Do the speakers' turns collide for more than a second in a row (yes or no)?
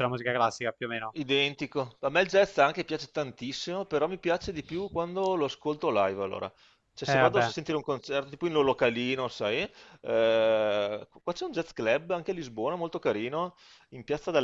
no